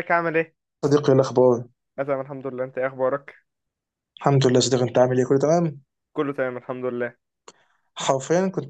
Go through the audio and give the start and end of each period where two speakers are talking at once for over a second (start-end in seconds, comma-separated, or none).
none